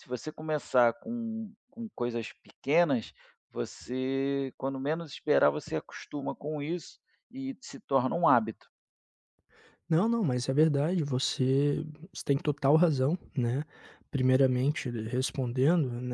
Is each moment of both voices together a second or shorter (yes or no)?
yes